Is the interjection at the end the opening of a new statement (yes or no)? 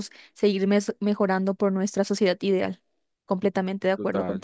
yes